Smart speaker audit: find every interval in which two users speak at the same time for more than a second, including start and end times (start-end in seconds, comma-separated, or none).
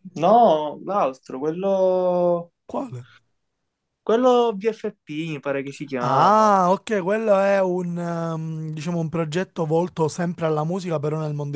none